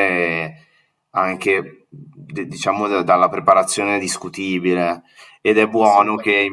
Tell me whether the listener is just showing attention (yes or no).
yes